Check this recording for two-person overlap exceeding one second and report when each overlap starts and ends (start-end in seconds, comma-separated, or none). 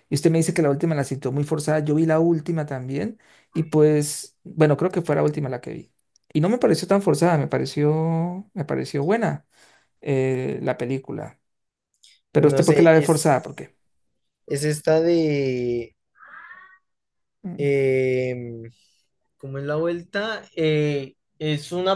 12.3-13.7